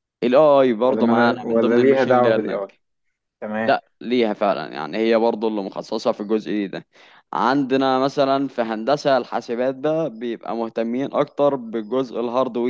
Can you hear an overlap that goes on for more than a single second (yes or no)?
yes